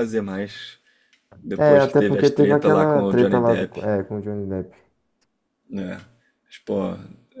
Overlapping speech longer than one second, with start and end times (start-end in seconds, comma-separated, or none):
1.6-3.8